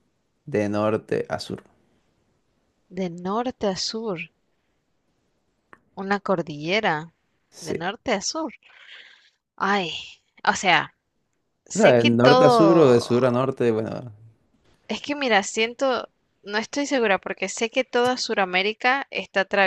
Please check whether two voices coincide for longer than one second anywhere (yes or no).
yes